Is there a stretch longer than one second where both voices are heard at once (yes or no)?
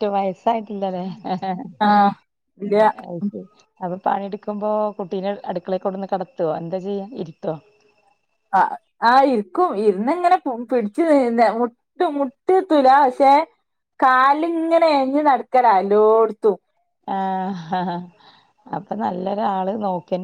no